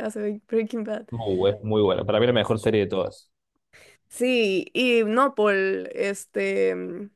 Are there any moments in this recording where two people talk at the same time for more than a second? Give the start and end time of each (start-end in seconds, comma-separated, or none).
none